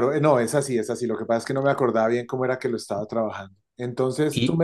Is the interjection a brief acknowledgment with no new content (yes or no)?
yes